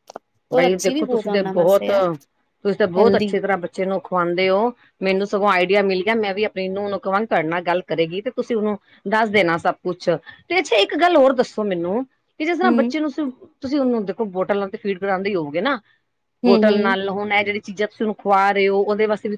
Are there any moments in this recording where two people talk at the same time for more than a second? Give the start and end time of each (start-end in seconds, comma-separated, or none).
0.6-2.0